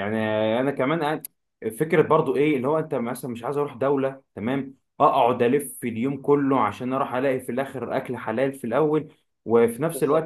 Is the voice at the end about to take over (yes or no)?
no